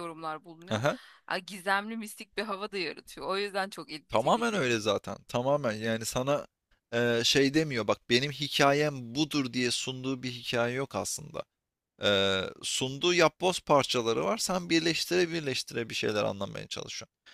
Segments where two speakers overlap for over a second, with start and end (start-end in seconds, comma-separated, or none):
none